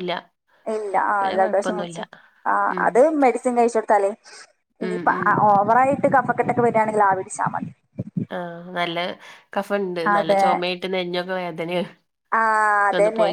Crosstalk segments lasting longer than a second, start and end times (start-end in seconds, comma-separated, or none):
none